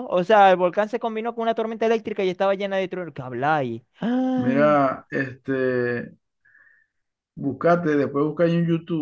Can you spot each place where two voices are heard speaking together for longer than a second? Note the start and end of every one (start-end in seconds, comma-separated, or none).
none